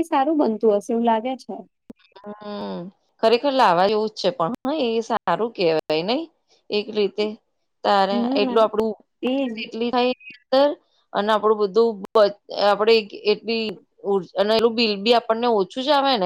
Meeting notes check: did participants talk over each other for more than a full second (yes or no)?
no